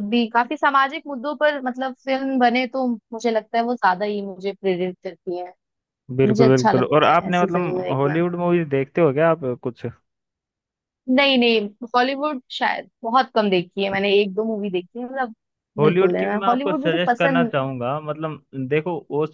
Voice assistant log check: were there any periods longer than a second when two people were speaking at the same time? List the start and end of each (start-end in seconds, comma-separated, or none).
6.2-8.2, 15.8-17.5